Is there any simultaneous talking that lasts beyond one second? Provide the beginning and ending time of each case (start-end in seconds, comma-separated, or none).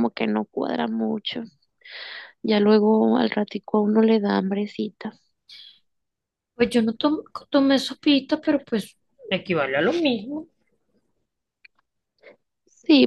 none